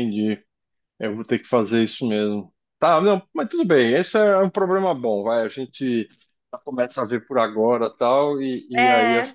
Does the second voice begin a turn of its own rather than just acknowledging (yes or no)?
no